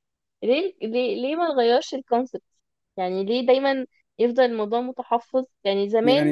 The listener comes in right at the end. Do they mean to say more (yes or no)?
yes